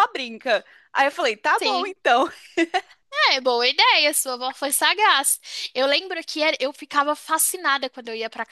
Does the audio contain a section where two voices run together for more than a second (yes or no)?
no